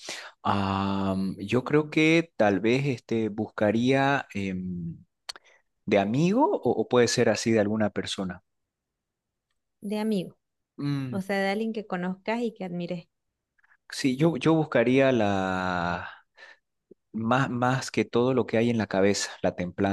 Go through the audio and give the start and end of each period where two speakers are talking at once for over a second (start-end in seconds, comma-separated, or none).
none